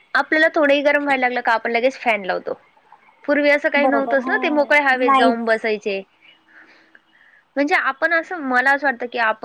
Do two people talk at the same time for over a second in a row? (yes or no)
yes